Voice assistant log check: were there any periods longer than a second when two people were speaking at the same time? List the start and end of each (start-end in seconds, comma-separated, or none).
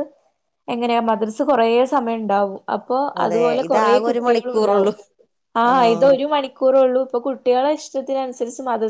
3.2-4.9